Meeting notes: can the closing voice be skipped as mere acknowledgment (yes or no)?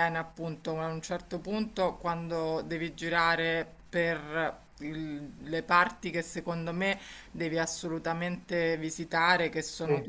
yes